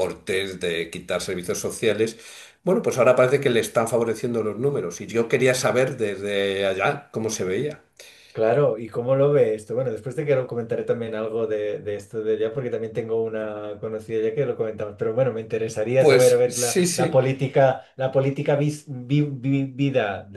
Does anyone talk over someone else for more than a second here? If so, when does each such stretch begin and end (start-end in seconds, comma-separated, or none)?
16.0-17.2